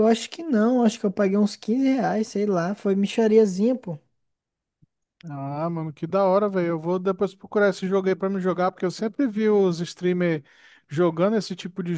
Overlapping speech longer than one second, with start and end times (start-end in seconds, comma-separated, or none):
none